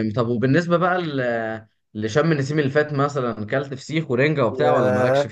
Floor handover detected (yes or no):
yes